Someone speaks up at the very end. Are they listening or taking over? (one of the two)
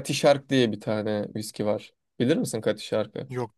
listening